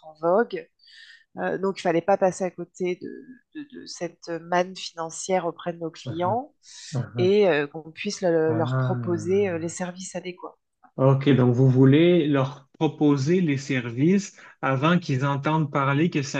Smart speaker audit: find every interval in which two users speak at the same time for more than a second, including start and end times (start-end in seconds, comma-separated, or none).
8.5-9.8